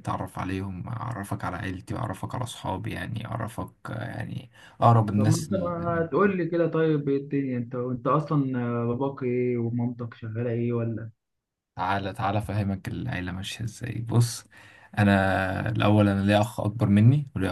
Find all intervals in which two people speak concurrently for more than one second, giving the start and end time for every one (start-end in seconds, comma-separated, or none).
none